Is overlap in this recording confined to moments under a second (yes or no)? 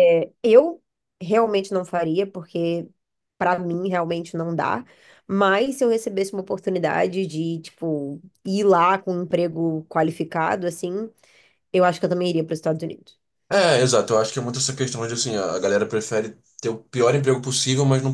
yes